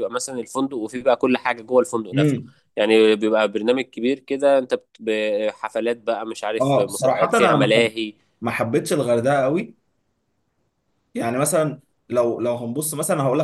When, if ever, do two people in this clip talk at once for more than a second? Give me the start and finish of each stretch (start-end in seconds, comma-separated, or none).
6.6-7.9